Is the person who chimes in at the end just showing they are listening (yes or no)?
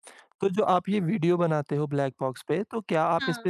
yes